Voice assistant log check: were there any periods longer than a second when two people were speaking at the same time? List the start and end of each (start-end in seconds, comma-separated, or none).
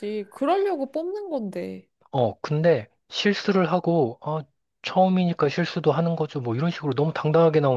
none